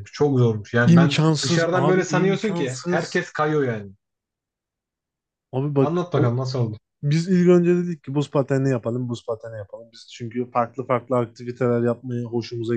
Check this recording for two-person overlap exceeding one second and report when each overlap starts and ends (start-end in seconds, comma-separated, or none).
0.8-3.2